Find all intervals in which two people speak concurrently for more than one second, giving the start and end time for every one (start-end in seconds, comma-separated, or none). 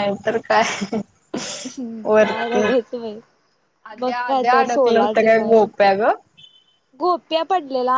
4.0-5.7